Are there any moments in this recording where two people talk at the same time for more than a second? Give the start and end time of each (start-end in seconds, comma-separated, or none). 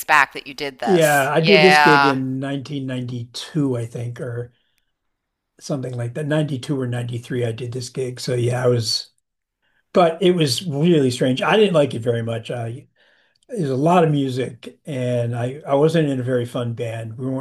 0.8-2.2